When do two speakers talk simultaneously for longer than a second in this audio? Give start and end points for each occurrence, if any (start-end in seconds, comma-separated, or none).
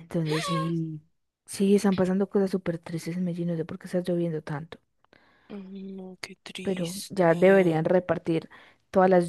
6.6-7.8